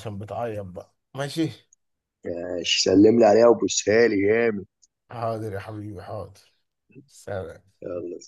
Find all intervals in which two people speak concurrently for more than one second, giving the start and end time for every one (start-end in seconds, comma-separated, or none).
none